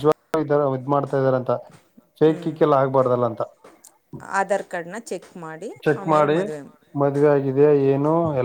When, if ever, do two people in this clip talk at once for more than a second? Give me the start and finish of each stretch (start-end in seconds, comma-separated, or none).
none